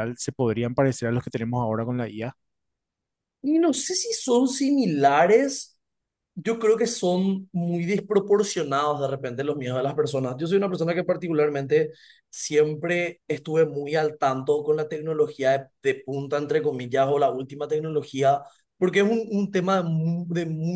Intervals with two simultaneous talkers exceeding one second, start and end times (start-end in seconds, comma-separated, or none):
none